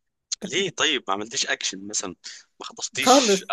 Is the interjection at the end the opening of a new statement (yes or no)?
no